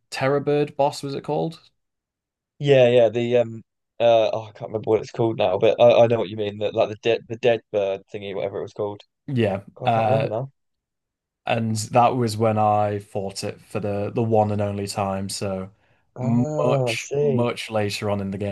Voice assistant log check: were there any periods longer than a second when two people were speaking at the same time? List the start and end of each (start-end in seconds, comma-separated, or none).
16.2-17.5